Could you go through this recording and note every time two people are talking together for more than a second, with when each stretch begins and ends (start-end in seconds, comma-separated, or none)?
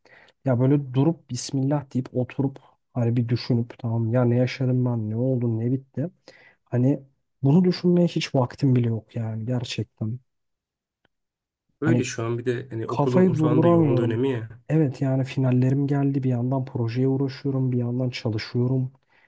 12.9-14.2